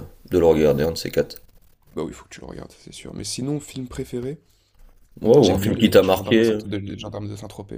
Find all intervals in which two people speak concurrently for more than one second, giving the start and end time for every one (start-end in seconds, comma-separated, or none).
5.4-6.6